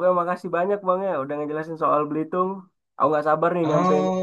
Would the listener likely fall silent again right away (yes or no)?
no